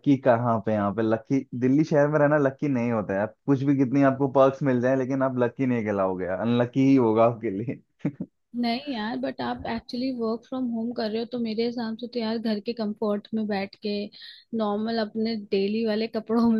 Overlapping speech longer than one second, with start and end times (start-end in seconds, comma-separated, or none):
none